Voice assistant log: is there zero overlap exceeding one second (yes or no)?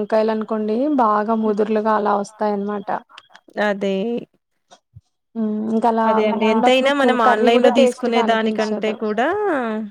no